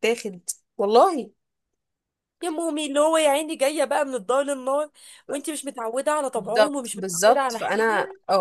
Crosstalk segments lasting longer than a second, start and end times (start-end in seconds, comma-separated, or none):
6.3-7.8